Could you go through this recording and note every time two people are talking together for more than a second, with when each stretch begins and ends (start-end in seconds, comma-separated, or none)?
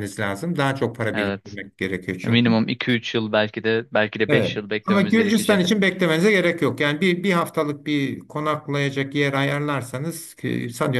4.3-5.6